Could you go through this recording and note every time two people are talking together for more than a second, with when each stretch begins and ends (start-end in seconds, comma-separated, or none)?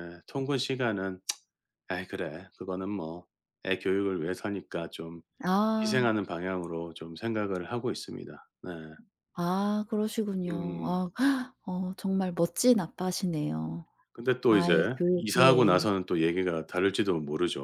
14.5-15.9